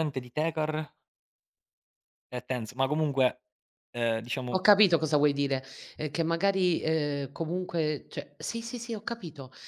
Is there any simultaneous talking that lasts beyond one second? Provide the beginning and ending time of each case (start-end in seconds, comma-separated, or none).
none